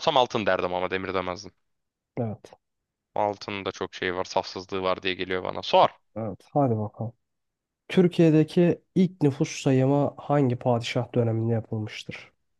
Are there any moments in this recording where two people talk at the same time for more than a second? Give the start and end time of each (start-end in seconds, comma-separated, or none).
none